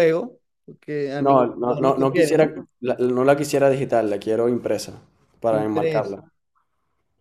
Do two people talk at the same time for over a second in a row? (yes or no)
yes